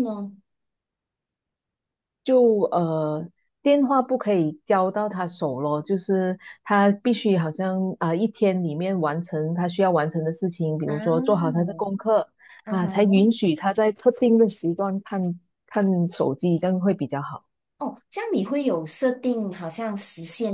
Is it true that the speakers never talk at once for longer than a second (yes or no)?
yes